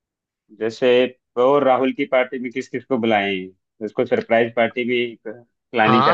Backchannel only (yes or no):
no